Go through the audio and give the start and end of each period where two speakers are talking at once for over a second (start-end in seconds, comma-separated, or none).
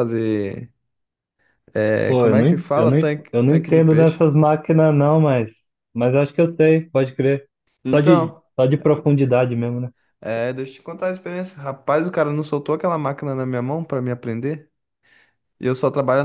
2.0-4.2